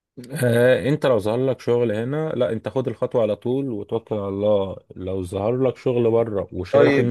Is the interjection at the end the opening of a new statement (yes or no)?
yes